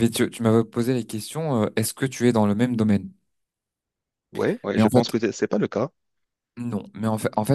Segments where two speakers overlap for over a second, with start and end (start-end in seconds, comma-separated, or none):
none